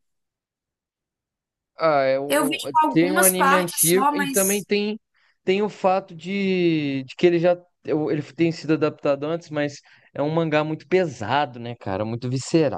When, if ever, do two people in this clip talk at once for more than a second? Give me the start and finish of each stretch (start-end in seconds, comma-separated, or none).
2.3-4.7